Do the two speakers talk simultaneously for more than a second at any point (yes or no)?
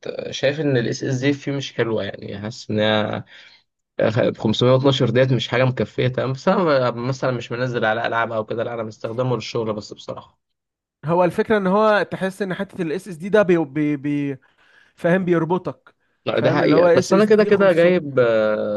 yes